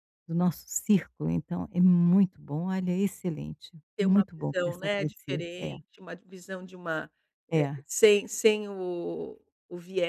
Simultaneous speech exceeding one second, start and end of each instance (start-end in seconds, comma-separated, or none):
4.0-5.8